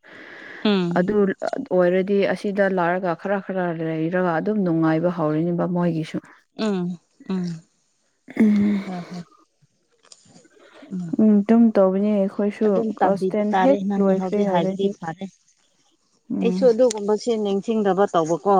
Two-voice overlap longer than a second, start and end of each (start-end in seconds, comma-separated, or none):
12.7-14.9